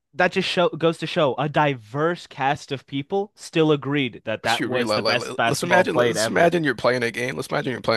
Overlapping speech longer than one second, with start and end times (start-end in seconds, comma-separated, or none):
4.4-6.5